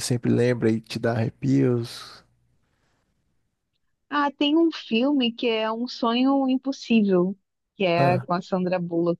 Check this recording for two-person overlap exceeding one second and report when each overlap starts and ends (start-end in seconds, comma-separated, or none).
none